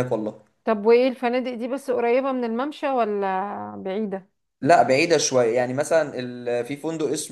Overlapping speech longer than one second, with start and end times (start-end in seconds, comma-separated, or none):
none